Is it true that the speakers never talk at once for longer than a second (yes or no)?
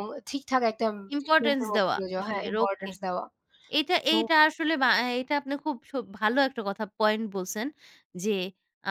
no